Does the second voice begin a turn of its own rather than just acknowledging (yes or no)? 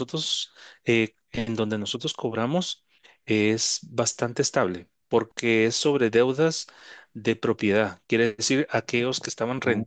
no